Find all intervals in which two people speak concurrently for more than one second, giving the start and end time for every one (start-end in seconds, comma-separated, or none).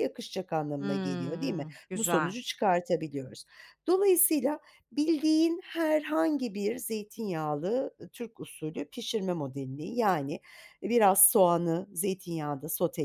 0.8-2.4